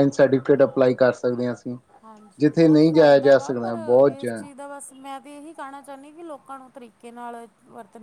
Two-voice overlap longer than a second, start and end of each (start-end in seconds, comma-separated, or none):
2.4-4.4